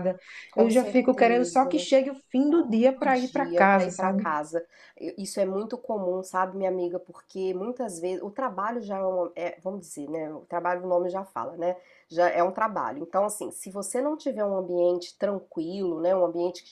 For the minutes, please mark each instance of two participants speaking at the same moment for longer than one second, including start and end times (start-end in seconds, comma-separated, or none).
0.5-1.9, 2.9-4.3